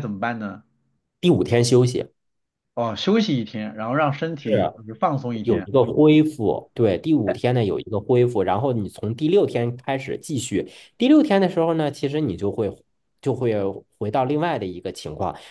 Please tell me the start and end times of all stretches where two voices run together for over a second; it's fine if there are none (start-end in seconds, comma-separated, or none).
none